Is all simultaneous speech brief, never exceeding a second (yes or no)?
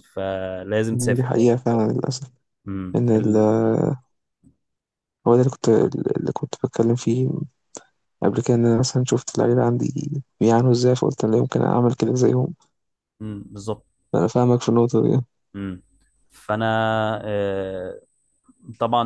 yes